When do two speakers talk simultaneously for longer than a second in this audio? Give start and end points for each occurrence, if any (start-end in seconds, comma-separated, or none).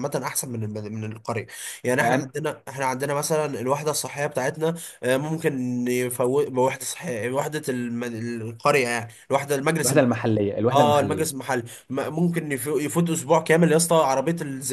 none